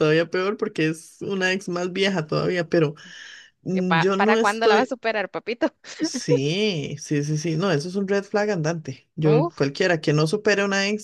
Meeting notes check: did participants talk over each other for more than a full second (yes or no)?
yes